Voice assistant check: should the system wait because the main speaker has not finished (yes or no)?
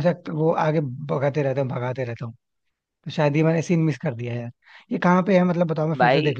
no